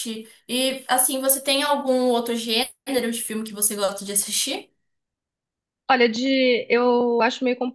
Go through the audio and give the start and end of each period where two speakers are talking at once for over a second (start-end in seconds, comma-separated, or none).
none